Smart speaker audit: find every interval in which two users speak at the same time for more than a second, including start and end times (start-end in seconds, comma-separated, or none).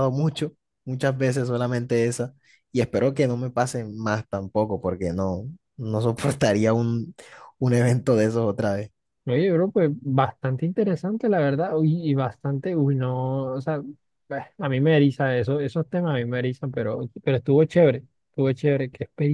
none